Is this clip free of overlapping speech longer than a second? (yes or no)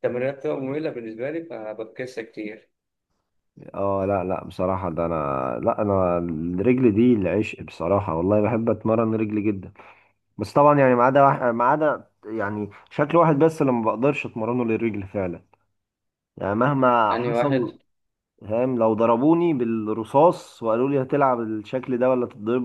yes